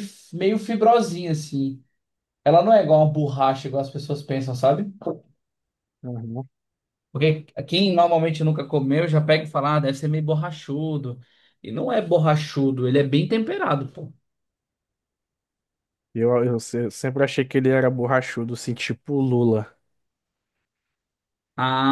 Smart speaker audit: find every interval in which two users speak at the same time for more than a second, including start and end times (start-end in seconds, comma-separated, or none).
none